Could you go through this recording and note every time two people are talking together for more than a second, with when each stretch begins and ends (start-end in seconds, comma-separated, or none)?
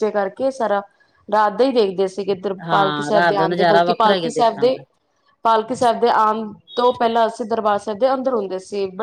2.7-4.8